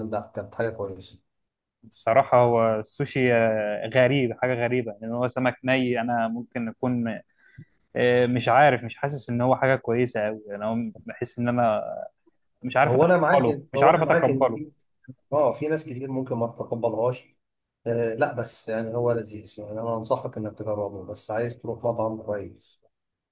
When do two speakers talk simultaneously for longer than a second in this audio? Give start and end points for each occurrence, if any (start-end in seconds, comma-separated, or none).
12.8-14.6